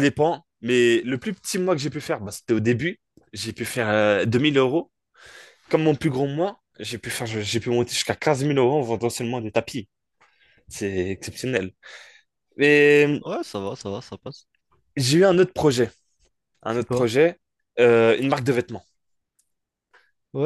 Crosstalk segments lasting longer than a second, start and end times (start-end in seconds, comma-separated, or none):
none